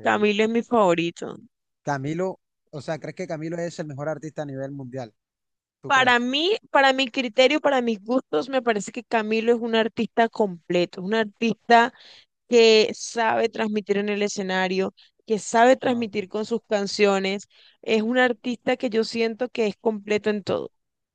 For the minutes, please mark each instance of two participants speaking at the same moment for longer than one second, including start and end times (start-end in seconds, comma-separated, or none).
none